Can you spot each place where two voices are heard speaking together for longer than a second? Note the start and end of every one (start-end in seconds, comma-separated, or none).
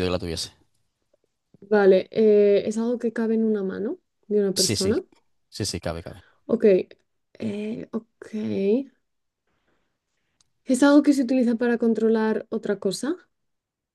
none